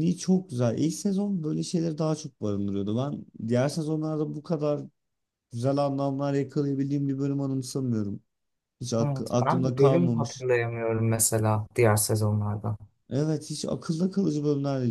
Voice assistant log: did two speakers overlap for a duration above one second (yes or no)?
yes